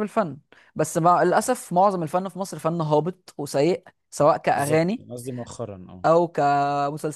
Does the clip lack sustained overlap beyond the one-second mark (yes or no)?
yes